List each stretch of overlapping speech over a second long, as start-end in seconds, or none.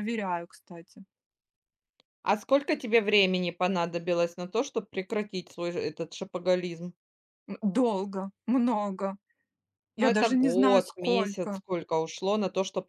9.9-11.6